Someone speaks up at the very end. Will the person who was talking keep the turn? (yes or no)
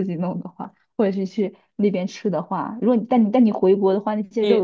no